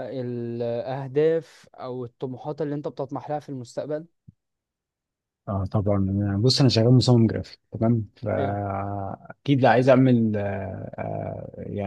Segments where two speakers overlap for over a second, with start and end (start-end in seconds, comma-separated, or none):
none